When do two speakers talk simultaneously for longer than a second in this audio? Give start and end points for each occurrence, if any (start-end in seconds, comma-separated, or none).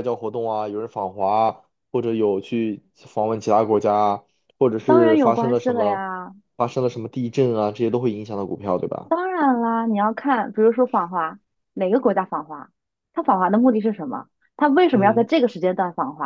4.8-6.0